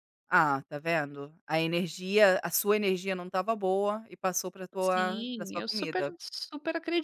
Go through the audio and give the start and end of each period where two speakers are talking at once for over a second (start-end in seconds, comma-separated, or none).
4.8-6.2